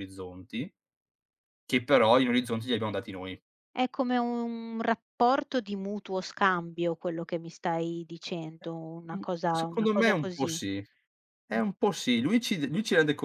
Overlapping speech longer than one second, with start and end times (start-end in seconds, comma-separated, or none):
9.1-10.6